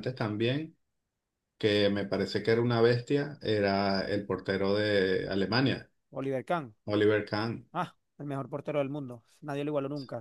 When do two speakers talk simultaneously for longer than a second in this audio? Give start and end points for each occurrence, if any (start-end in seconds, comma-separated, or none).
none